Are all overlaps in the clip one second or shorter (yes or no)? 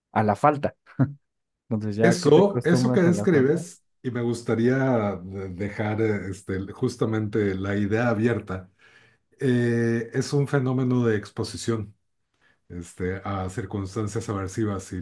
no